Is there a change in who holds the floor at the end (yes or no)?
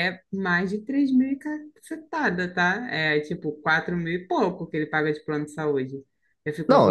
yes